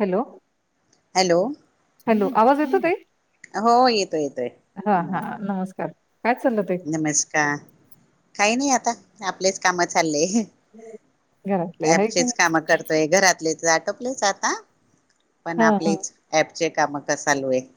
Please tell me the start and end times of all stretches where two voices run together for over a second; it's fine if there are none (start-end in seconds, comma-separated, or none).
none